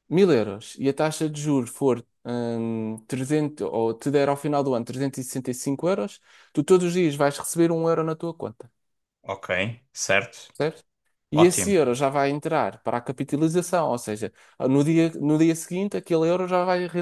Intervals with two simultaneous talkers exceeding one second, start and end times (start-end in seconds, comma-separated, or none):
none